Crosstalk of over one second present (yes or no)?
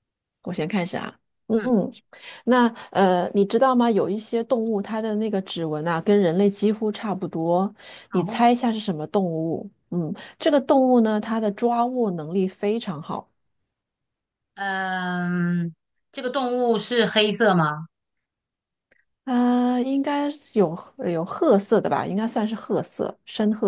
no